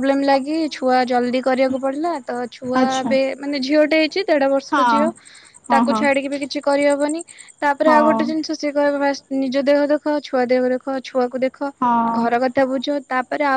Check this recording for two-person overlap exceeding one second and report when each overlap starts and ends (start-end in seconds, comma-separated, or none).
none